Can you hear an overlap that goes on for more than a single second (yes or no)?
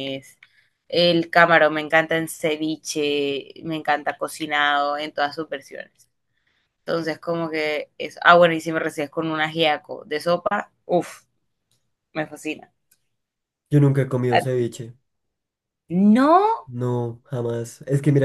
no